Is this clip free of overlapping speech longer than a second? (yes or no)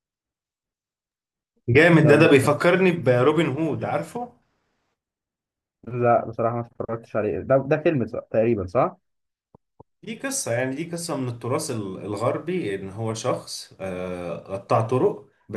yes